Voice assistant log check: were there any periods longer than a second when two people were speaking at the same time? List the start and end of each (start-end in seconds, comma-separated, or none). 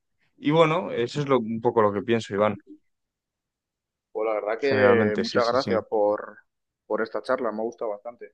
4.6-5.8